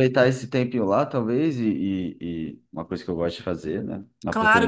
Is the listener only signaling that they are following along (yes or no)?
no